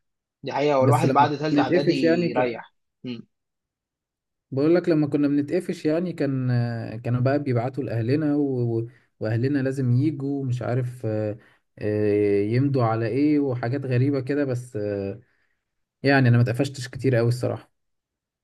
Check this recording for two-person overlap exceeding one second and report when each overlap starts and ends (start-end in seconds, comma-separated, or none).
0.8-2.6